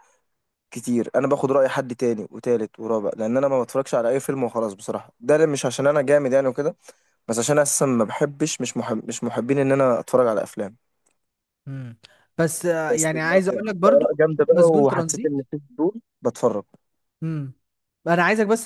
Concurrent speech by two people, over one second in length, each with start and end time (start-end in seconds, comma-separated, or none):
12.9-15.4